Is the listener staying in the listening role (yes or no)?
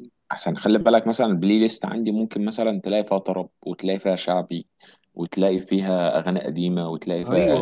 no